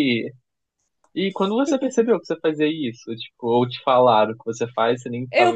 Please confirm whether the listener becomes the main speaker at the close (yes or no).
yes